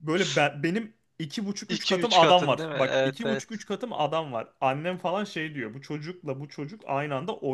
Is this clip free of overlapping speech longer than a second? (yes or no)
no